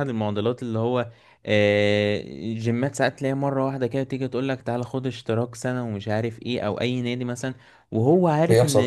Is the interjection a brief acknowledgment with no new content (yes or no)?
yes